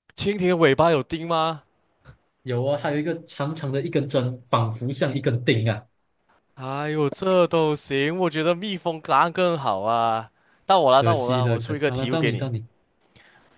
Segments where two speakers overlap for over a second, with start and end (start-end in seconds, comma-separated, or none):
11.0-12.5